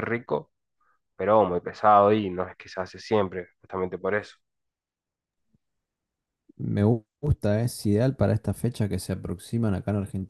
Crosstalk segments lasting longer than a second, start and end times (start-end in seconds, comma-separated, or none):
none